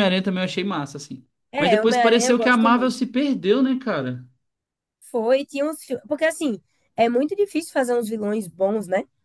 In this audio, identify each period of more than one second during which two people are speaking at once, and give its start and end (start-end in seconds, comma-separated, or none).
1.5-3.0